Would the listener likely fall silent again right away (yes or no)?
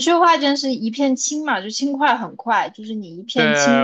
no